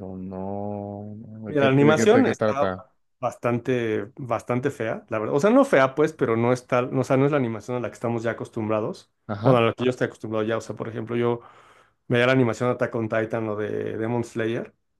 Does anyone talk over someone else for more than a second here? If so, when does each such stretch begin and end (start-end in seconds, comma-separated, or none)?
1.5-2.7